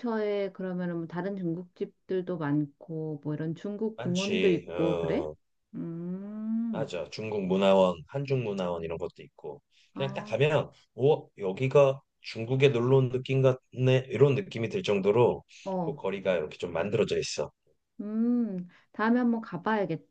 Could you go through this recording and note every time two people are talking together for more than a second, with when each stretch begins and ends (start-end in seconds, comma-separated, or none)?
4.0-5.3